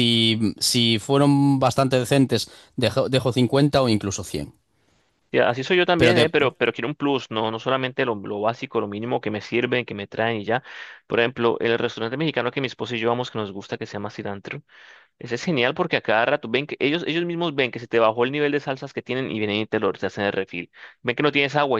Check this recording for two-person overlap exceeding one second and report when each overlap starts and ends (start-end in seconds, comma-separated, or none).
none